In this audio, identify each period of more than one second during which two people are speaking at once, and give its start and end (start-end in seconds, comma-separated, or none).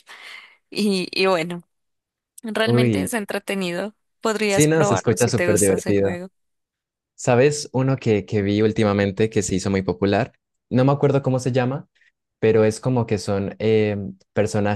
4.5-6.2